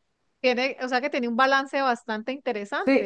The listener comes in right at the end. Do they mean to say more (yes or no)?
yes